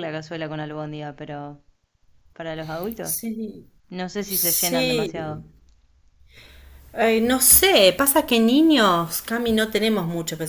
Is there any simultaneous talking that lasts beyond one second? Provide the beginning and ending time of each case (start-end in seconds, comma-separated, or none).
4.2-5.4